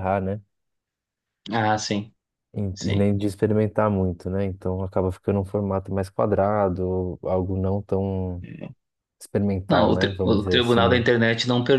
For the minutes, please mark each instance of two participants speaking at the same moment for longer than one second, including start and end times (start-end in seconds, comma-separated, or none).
9.7-11.1